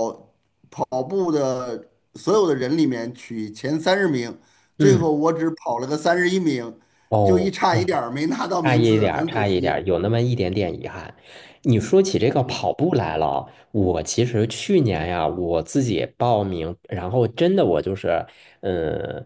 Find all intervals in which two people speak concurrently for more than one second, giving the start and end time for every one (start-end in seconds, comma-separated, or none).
8.6-9.9